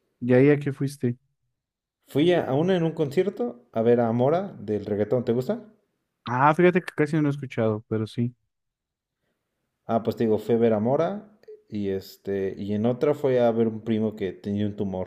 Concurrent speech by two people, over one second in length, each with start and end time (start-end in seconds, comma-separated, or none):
none